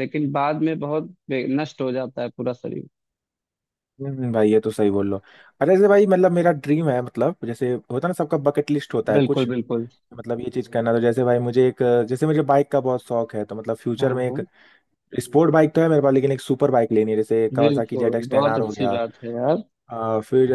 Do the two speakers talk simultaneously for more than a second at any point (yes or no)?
yes